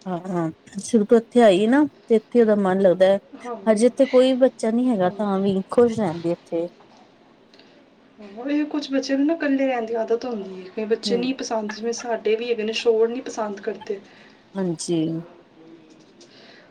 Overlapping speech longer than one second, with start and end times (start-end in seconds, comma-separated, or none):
none